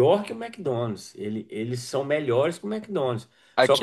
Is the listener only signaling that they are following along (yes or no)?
no